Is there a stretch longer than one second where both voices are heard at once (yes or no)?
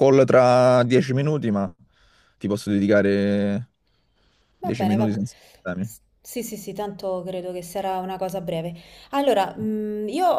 no